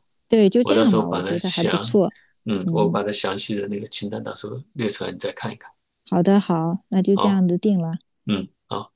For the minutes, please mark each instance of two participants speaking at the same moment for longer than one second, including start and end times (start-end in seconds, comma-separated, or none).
0.6-2.0